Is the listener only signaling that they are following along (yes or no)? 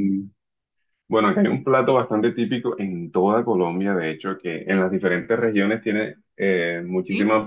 yes